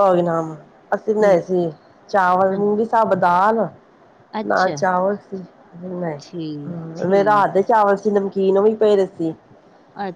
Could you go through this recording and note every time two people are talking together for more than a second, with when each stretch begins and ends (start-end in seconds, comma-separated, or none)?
6.2-7.6